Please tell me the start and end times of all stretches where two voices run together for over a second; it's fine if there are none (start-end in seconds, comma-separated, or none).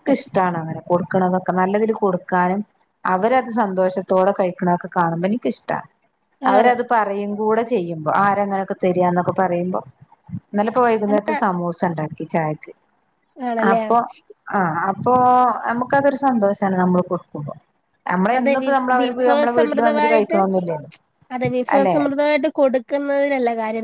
18.4-20.4